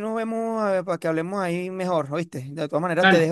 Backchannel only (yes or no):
yes